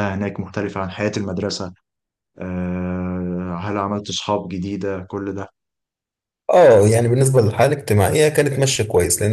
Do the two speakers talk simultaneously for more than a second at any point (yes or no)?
no